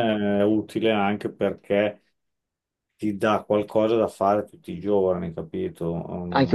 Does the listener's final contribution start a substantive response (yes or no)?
yes